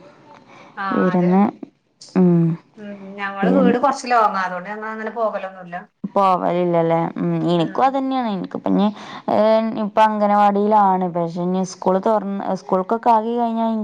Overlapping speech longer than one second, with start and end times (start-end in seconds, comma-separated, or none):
none